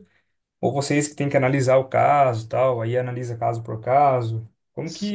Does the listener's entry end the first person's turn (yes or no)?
yes